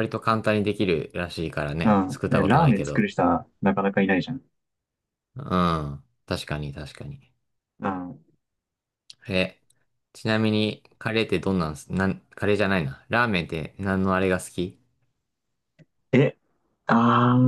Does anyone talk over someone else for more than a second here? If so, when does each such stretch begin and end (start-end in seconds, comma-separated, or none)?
1.8-3.1